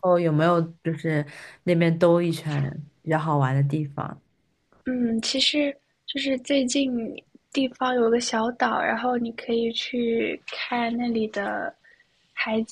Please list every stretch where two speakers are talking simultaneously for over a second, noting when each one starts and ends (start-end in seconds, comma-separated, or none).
none